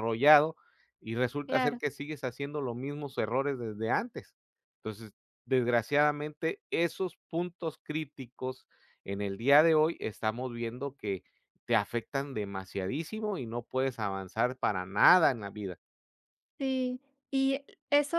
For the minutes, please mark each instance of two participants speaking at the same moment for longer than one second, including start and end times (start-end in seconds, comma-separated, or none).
none